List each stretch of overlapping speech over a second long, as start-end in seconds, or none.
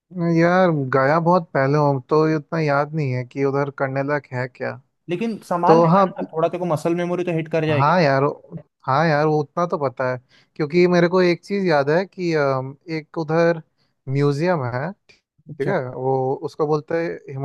none